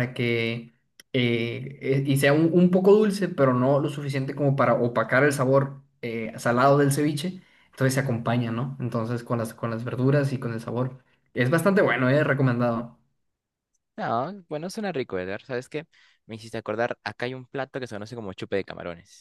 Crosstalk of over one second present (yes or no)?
no